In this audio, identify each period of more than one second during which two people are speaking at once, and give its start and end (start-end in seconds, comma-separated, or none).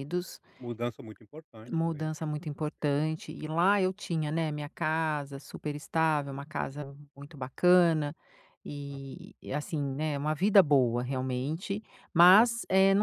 none